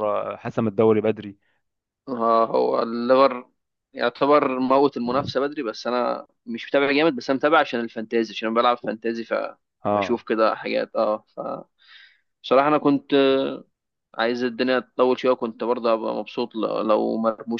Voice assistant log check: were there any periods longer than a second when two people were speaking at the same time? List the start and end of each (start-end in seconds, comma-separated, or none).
none